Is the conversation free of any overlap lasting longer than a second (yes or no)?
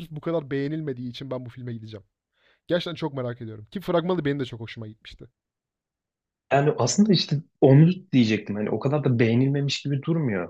yes